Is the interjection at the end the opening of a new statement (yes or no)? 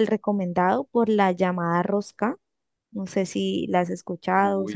yes